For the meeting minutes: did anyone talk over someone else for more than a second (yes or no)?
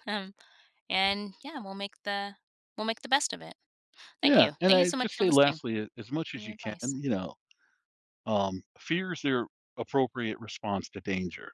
yes